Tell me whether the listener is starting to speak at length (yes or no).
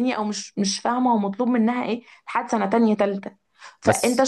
no